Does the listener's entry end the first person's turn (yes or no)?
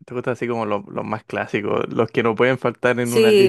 yes